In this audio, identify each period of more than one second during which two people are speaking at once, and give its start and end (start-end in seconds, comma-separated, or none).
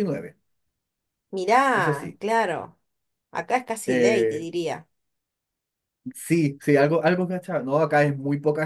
none